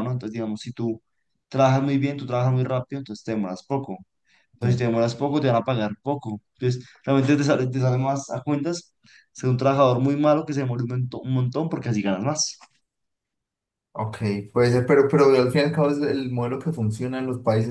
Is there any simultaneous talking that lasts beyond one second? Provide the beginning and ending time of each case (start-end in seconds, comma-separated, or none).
none